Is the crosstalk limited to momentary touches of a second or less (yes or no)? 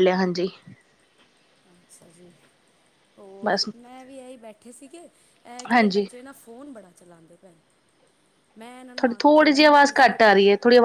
yes